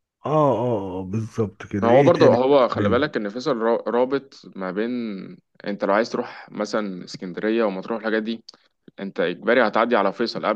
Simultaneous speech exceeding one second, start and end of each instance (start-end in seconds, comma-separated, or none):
none